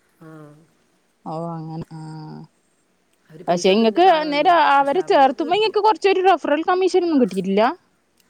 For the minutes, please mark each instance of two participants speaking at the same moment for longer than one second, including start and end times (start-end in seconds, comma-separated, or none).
3.5-5.7